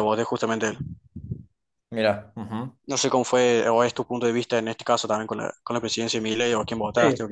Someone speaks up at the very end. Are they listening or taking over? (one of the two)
taking over